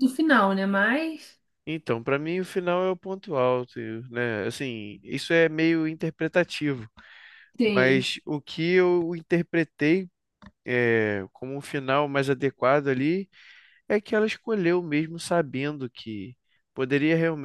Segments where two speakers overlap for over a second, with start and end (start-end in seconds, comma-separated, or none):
none